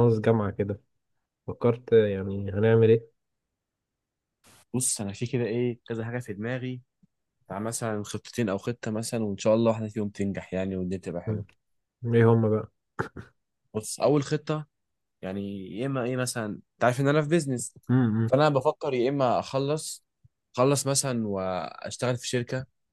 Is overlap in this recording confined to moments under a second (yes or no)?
yes